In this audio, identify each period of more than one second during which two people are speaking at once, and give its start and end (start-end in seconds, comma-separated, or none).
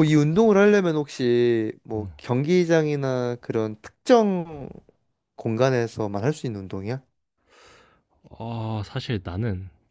none